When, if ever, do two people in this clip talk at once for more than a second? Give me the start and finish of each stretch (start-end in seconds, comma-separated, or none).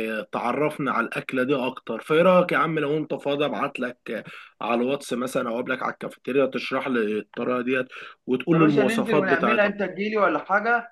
8.5-9.7